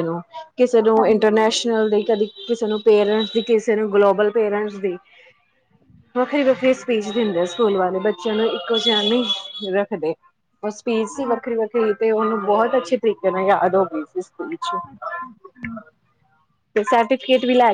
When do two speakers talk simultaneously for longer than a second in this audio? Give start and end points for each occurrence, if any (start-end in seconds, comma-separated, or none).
none